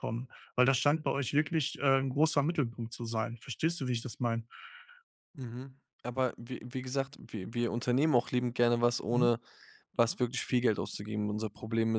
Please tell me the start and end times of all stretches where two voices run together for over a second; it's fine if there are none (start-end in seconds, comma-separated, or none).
none